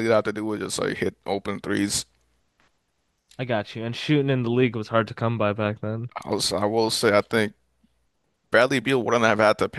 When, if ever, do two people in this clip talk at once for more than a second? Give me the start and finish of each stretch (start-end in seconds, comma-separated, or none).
none